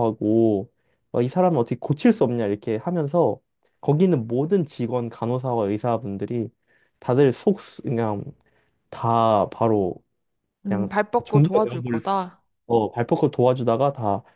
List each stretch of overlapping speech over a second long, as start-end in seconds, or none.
10.7-12.2